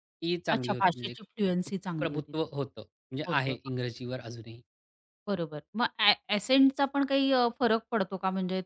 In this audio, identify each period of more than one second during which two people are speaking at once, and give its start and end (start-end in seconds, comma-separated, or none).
0.5-2.3